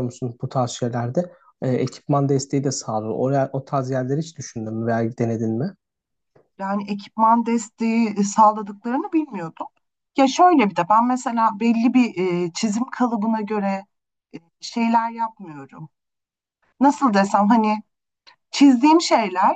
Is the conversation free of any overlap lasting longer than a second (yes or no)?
yes